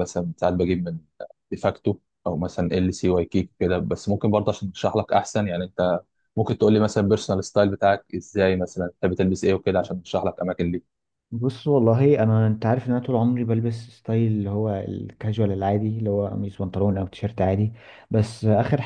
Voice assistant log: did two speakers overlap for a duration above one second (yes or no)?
no